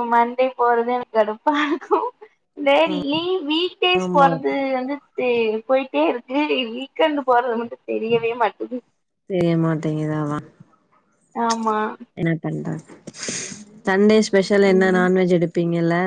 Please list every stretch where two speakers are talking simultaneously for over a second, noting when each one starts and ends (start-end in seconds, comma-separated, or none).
none